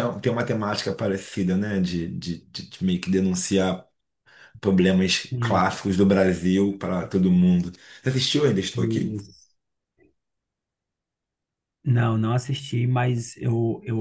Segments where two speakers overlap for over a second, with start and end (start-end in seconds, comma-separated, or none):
none